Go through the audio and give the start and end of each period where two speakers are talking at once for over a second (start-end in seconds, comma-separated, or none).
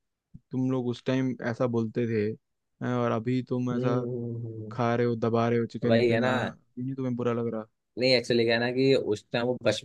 none